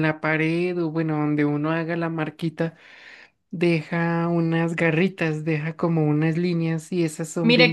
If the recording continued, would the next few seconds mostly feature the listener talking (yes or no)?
yes